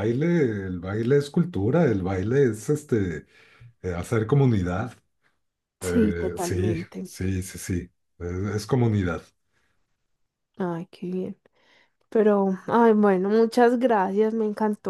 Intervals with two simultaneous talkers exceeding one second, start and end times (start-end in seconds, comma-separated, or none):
5.8-7.1